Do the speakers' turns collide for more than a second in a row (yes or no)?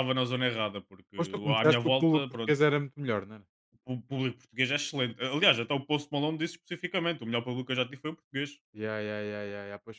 yes